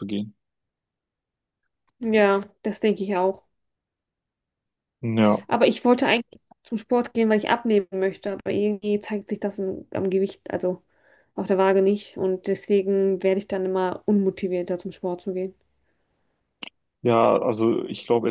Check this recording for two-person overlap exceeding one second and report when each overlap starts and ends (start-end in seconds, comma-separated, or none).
none